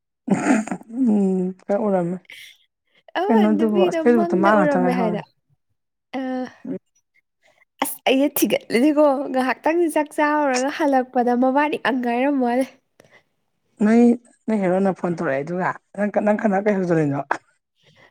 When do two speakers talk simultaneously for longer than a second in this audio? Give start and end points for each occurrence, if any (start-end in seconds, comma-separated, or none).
3.2-5.2